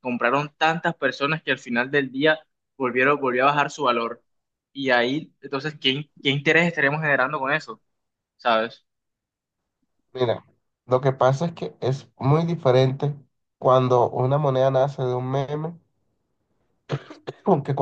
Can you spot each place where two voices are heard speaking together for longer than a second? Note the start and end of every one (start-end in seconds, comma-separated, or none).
none